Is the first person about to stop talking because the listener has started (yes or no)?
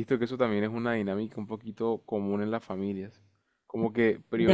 no